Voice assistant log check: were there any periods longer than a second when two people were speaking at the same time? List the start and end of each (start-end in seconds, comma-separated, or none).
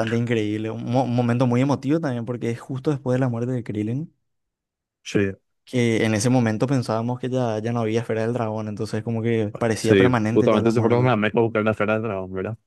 9.8-11.2